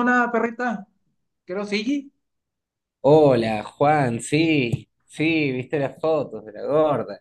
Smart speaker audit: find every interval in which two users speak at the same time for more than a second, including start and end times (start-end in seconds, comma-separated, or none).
none